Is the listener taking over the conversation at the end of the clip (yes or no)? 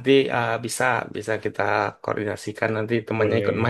no